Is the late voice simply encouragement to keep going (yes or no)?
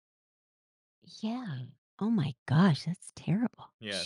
no